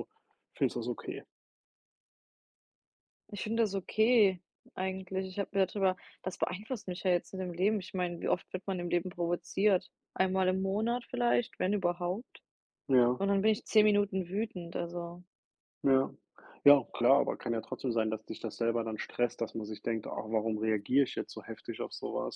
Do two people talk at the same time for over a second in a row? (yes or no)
no